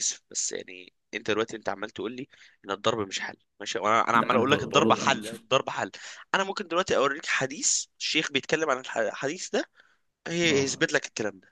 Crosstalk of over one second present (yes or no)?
yes